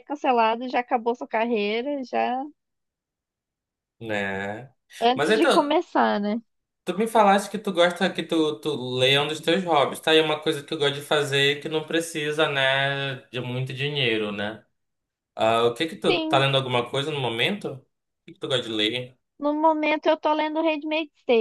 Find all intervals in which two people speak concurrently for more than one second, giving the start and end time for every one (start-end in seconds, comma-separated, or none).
none